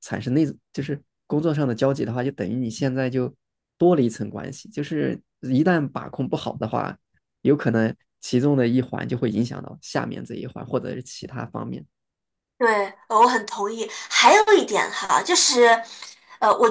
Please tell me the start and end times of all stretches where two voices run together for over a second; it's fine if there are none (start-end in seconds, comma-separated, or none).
none